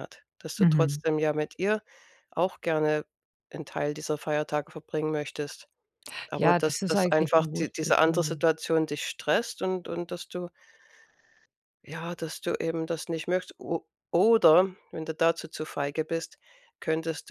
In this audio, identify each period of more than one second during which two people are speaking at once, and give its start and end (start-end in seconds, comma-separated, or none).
6.4-8.4